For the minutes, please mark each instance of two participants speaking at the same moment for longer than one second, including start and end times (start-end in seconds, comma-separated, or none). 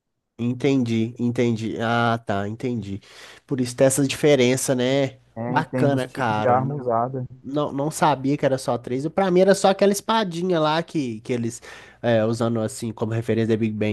5.3-6.9